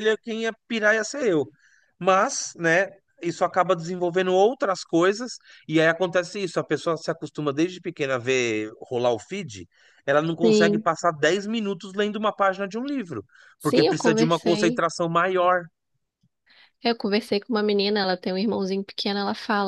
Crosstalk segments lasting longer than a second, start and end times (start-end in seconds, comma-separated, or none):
13.6-14.8